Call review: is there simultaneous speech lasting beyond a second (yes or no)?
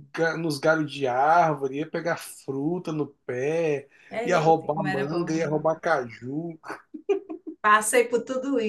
yes